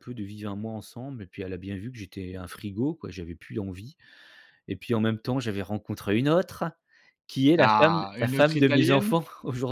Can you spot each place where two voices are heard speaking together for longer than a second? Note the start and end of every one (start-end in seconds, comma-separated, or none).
7.6-9.2